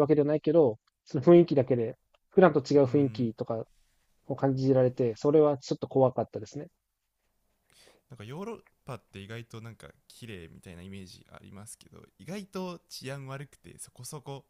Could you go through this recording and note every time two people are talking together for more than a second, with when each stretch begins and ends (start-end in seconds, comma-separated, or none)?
none